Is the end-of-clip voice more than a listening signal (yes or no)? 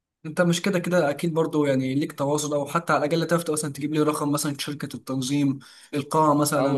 yes